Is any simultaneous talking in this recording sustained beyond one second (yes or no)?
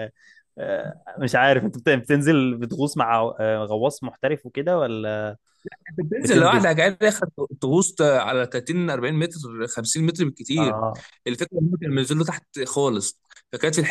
no